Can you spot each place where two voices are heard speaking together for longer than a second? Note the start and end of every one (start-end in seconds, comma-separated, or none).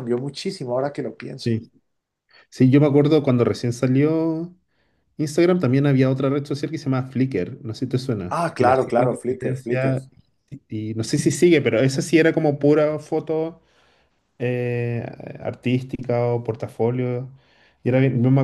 8.3-9.9